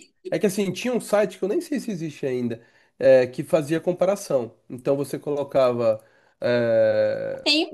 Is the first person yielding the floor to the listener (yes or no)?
yes